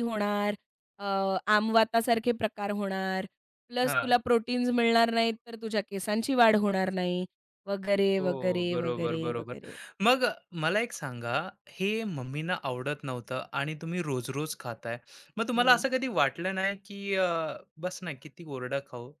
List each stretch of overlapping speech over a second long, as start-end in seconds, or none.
8.2-9.6